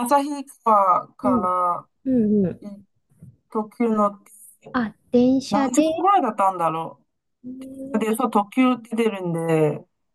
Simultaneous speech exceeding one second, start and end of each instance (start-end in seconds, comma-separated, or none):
none